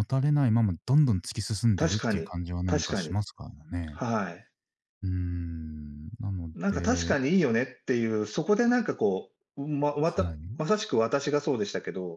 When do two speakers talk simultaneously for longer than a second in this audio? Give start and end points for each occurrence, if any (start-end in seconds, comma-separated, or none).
1.8-3.2